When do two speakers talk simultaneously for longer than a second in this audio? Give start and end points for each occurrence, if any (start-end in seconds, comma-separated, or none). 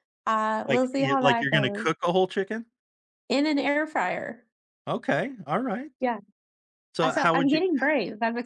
0.7-1.9